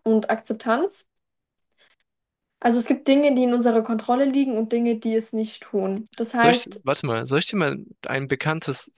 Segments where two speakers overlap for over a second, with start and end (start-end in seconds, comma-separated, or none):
none